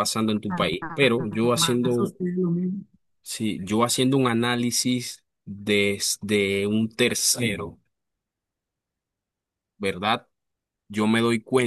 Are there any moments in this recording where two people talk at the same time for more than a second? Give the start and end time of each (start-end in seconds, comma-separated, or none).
0.8-2.1